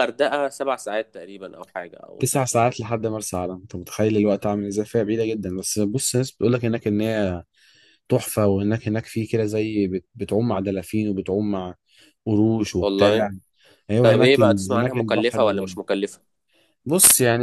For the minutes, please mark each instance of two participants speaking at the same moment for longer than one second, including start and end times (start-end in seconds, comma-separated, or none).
14.0-15.8